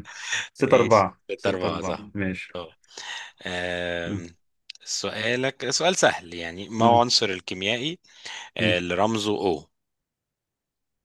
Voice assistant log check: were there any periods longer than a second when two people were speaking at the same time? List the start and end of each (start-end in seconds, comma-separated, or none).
0.6-2.1